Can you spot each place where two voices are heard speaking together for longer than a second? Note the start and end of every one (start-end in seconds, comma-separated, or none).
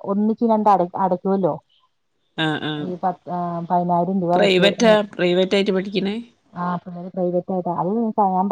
none